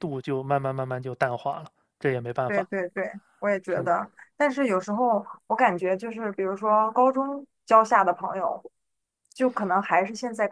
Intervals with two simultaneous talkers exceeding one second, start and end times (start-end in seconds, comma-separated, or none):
none